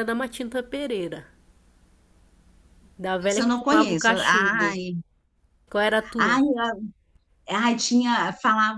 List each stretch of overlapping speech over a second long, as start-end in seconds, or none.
3.2-4.8